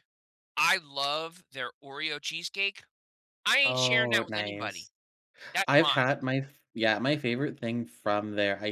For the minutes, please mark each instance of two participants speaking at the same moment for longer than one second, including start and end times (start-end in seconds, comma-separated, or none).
3.6-4.9